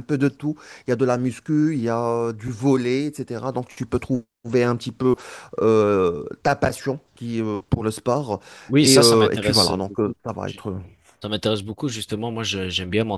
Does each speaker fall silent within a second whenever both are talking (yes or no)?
no